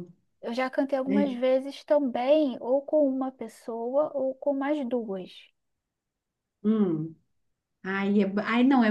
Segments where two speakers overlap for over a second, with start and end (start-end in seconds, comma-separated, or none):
none